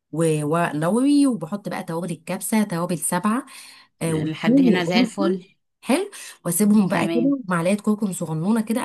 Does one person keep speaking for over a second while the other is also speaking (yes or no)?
yes